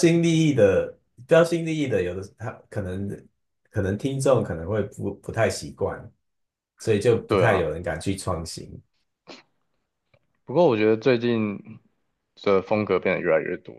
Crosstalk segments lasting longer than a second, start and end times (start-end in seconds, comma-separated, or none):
none